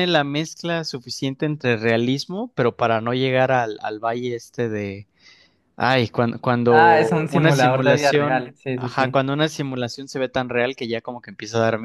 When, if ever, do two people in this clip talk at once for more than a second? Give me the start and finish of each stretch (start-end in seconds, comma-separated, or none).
6.7-9.2